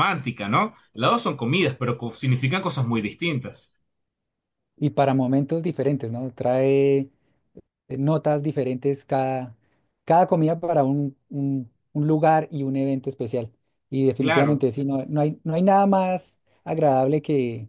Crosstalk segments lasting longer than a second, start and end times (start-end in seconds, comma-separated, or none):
none